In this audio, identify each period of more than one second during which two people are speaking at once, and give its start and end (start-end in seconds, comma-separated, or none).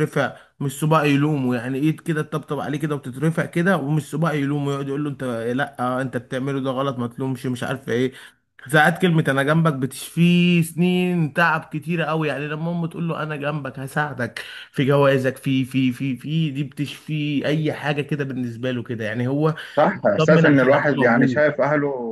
20.2-21.4